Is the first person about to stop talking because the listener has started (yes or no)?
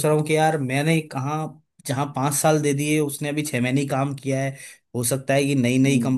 no